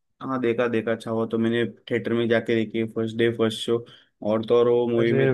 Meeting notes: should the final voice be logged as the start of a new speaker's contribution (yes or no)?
no